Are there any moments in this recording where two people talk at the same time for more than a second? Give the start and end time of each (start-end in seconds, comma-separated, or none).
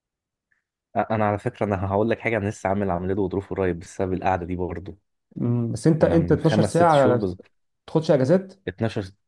6.0-7.3